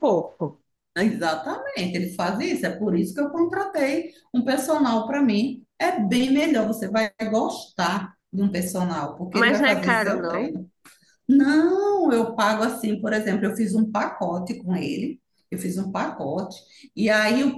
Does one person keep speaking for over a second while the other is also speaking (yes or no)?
yes